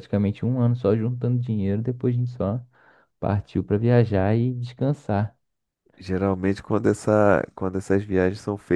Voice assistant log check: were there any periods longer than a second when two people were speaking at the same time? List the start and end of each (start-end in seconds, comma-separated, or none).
none